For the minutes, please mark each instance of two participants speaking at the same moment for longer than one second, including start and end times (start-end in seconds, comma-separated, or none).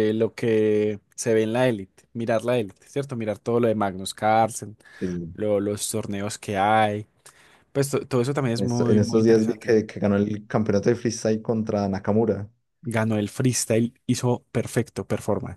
8.6-9.8